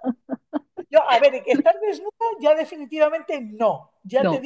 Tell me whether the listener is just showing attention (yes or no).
yes